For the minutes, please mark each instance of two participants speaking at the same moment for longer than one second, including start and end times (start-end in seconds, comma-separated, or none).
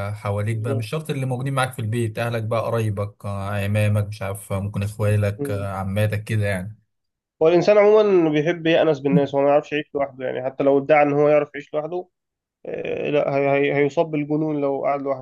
none